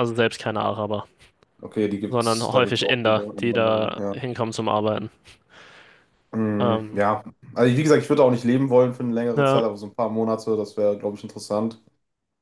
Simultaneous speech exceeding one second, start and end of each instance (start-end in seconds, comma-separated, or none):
2.1-4.2